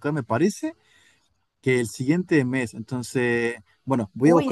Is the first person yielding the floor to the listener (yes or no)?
no